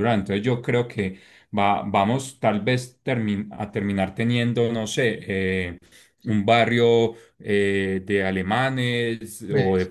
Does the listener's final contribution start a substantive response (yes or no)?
no